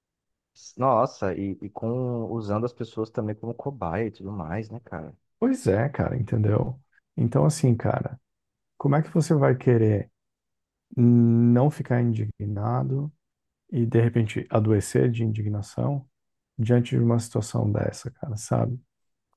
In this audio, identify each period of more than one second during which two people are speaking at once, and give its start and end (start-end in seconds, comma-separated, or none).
none